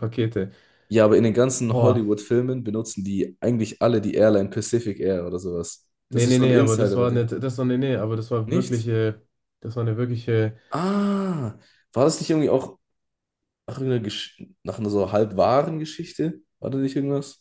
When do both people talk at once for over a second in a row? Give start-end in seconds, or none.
6.1-7.3